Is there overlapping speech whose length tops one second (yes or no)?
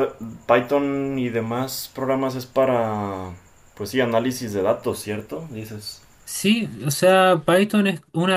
no